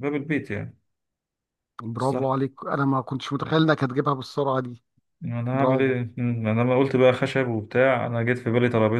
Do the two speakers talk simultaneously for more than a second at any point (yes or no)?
no